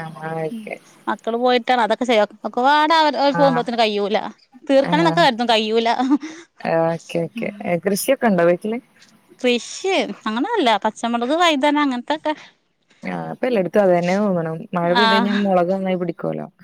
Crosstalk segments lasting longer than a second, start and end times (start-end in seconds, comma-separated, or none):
none